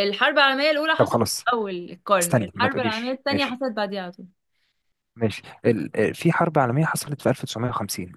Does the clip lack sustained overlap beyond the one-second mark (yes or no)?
no